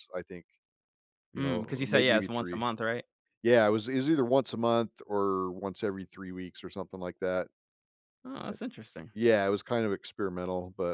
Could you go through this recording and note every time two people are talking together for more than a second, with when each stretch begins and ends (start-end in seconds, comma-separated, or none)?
1.4-2.7